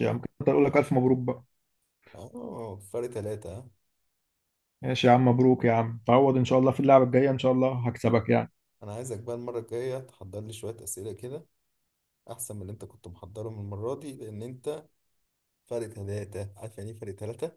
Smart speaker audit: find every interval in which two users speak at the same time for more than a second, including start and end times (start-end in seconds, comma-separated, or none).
none